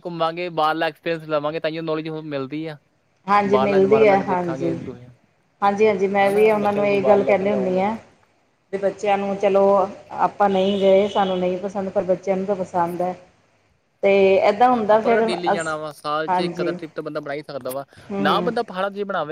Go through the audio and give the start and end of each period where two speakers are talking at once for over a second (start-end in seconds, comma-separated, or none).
3.5-4.8, 6.3-7.8